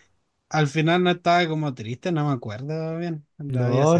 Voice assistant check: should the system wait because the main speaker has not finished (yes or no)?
no